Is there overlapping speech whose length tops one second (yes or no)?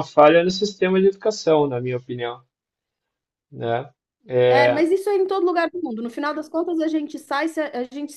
no